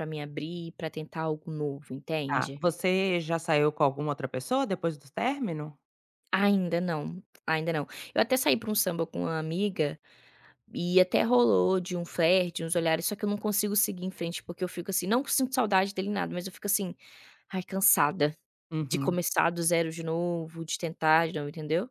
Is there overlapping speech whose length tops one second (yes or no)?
no